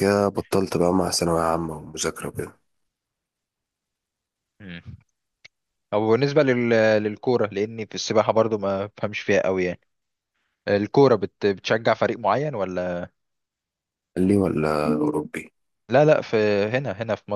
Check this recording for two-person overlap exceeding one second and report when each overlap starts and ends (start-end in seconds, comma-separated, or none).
none